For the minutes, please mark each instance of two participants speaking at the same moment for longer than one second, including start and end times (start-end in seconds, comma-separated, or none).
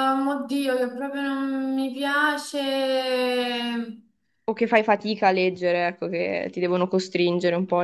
none